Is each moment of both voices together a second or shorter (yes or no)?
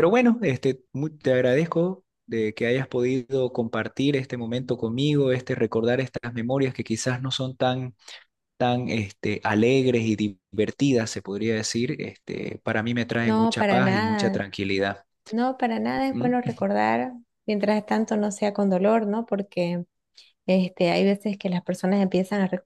no